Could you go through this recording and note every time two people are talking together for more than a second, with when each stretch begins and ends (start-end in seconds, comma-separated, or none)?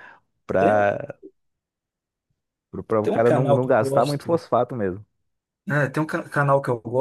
3.0-4.3